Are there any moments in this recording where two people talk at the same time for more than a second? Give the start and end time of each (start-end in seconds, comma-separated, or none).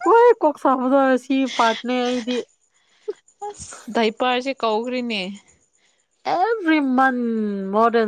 none